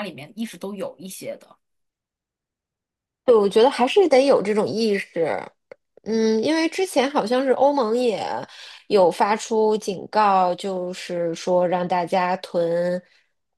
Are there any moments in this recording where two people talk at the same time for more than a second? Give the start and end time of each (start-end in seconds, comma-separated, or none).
none